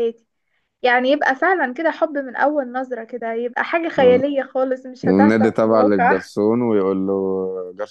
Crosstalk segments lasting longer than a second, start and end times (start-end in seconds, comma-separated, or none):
5.0-6.3